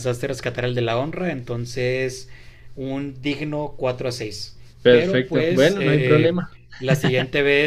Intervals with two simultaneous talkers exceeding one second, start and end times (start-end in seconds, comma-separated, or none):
4.8-6.4